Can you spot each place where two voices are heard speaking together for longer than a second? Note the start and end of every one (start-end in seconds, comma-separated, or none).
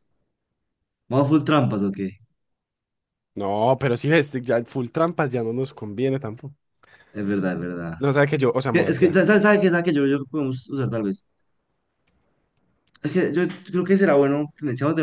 none